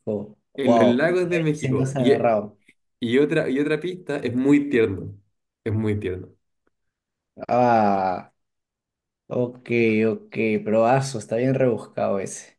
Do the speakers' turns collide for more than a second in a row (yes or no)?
yes